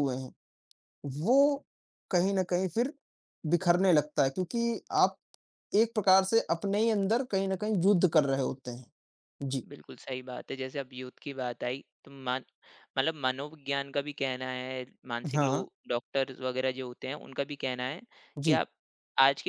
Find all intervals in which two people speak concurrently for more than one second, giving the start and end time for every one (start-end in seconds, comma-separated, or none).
none